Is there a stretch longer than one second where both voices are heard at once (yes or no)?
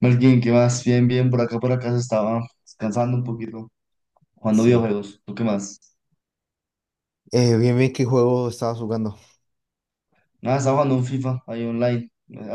no